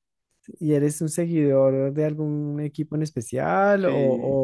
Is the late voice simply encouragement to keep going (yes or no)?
no